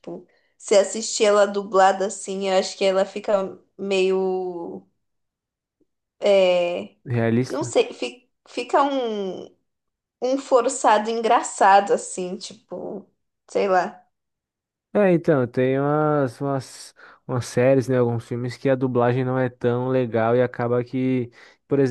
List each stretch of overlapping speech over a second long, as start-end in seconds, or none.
none